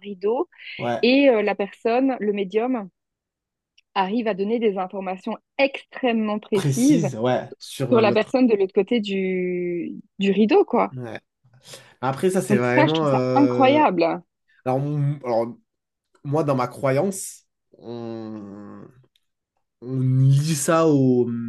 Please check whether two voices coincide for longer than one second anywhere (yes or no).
yes